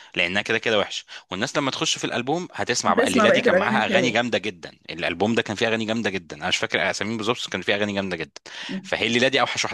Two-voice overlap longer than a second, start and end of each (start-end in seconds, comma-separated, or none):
2.9-4.2